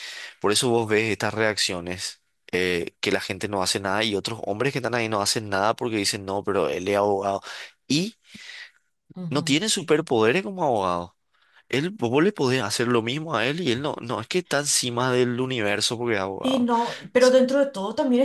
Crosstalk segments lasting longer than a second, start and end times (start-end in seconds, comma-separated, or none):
none